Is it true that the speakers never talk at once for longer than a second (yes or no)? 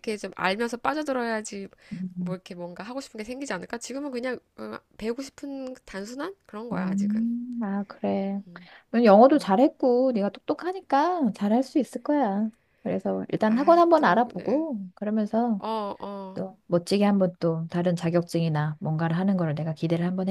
no